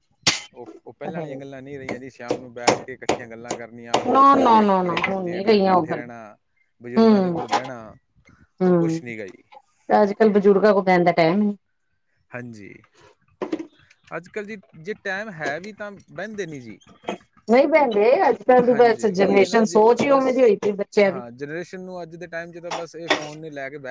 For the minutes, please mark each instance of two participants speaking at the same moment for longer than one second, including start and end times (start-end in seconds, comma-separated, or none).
4.5-6.0, 18.7-20.3